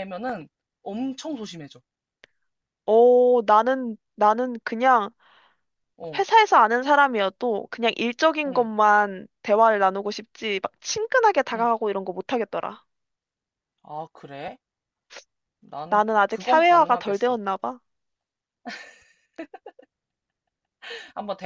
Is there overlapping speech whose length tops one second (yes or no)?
yes